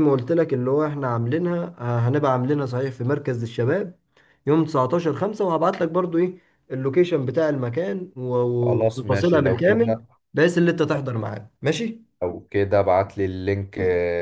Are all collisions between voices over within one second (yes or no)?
no